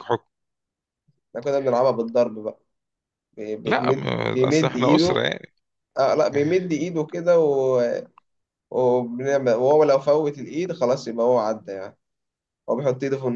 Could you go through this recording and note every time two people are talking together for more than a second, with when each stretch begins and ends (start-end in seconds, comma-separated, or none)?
3.6-5.2